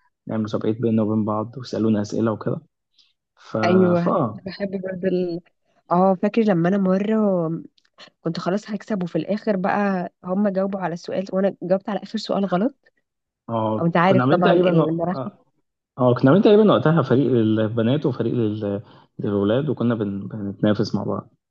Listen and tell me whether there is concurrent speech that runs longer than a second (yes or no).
yes